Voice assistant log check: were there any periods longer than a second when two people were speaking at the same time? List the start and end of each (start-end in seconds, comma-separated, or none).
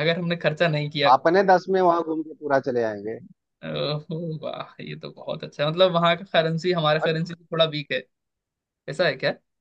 none